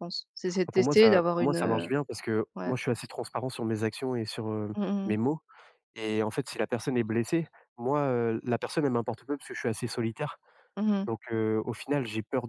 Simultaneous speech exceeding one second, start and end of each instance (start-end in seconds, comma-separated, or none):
0.7-1.9